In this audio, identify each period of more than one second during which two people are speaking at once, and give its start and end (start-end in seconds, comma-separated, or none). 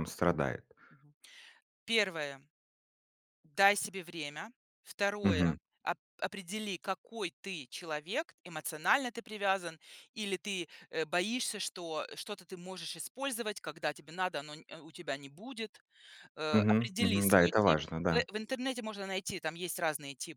16.5-18.2